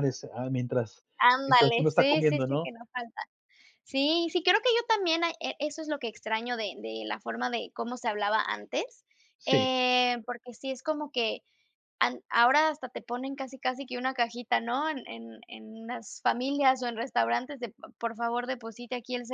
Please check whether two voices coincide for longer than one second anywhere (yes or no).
yes